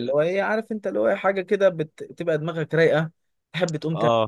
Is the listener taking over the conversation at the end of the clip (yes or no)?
no